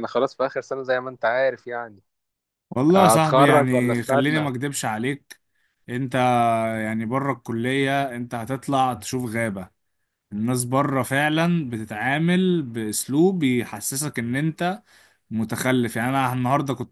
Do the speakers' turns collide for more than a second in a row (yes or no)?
yes